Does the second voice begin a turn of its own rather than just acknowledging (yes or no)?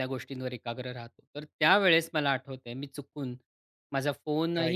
no